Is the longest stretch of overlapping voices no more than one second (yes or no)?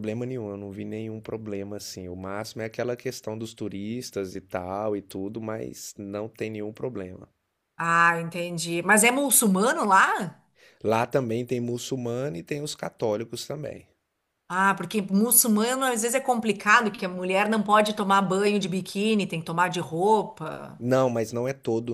yes